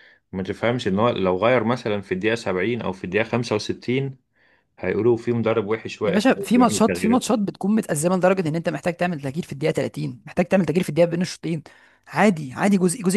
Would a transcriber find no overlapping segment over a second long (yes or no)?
no